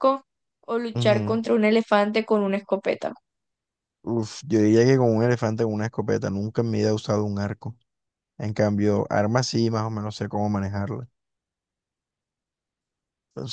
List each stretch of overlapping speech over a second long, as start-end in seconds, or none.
none